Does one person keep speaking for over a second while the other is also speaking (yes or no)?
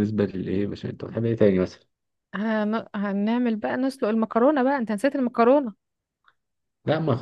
no